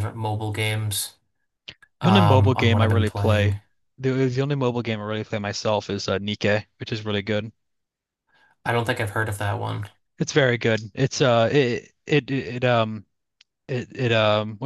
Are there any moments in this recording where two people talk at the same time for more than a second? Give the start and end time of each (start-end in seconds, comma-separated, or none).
2.0-3.6